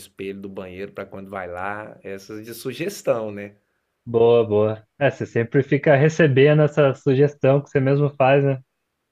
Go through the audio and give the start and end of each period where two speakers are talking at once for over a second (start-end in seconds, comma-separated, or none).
none